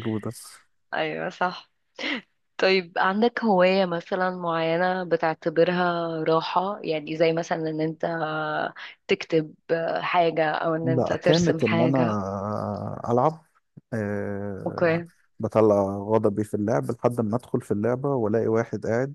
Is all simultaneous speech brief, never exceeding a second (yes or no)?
no